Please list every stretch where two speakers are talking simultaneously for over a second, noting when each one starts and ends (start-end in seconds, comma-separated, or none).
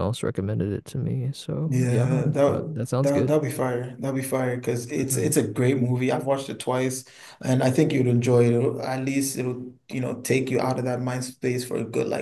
1.7-3.3